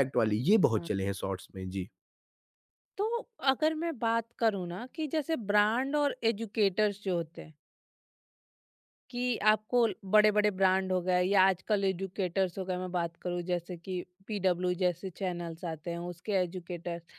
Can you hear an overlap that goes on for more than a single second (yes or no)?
no